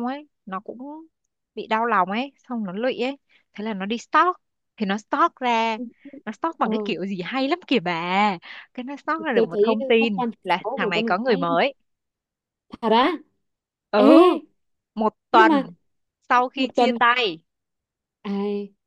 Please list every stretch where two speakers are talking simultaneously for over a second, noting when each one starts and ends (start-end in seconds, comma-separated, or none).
9.3-11.4